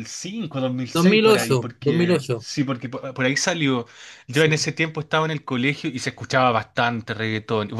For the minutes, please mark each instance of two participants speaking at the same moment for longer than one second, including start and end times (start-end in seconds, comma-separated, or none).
0.9-2.5